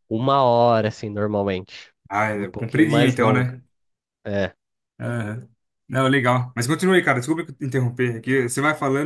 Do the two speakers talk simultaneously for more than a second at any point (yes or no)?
yes